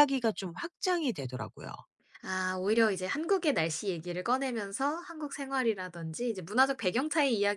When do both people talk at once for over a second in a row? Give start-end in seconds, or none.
none